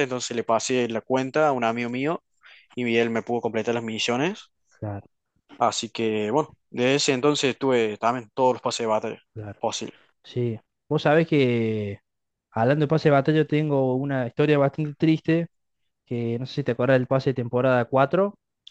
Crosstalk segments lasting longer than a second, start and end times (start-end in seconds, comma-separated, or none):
none